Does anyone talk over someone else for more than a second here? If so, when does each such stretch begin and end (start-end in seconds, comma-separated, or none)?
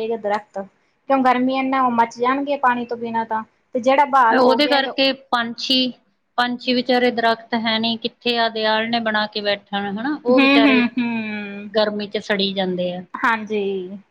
none